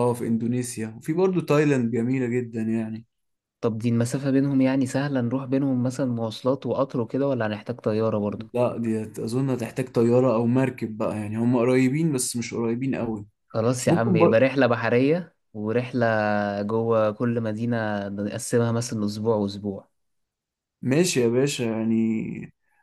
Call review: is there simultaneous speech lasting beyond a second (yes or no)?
no